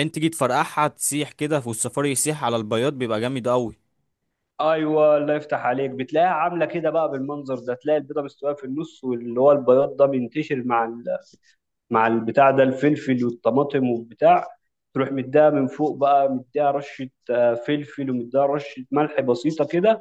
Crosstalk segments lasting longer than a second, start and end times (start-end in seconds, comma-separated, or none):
none